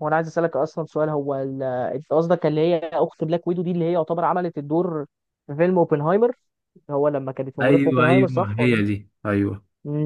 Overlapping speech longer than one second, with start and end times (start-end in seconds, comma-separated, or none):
7.6-8.8